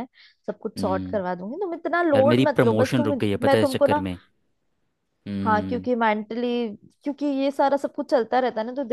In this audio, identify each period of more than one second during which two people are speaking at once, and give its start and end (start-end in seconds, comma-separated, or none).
2.1-4.0